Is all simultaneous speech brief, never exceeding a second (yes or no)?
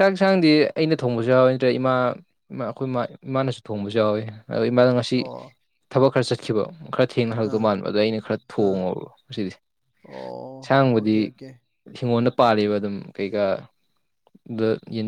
yes